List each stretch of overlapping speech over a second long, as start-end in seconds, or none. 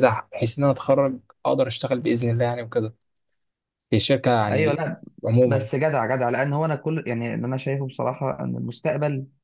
none